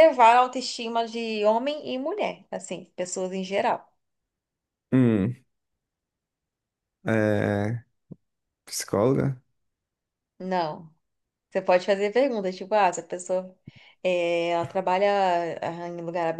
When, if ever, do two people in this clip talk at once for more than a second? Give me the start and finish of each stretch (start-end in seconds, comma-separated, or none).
none